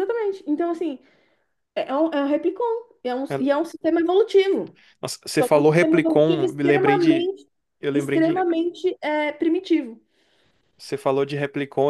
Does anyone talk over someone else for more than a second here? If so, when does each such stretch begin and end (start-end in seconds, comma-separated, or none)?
5.4-7.3